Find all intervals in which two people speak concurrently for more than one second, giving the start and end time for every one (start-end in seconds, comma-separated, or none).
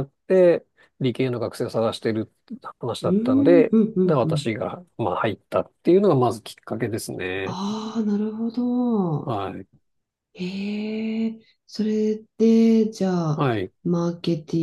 3.0-4.5